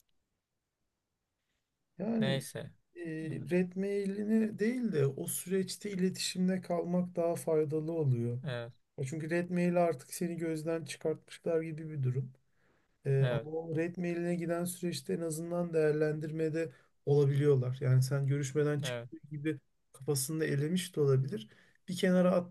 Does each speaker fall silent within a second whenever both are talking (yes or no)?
yes